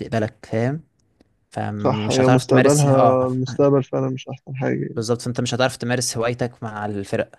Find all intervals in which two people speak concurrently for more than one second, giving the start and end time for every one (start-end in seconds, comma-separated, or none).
1.8-3.2